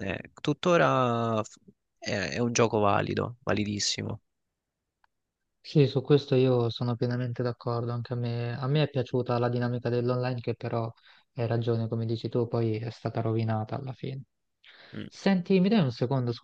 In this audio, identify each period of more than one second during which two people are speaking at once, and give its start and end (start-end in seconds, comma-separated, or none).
none